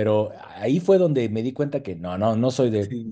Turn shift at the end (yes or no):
yes